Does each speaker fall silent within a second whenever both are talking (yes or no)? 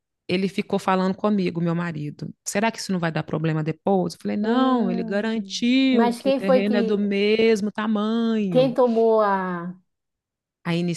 no